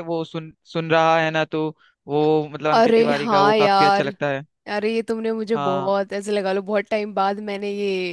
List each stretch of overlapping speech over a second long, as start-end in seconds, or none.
2.7-4.1